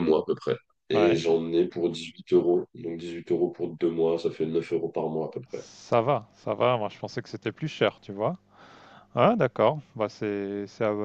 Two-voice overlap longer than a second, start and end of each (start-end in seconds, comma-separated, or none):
none